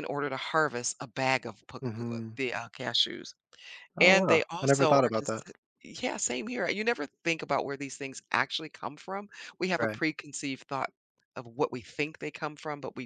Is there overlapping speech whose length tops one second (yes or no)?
yes